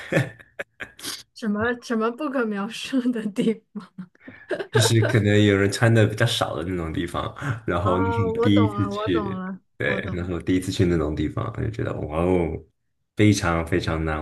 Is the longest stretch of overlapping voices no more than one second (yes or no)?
no